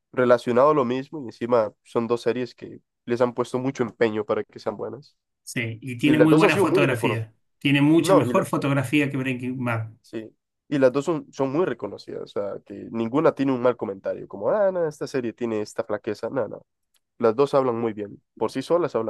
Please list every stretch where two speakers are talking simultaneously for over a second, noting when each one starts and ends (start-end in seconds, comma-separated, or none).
6.0-7.3